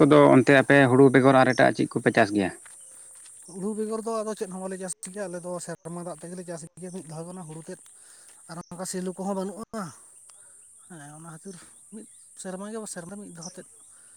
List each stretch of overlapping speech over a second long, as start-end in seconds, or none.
none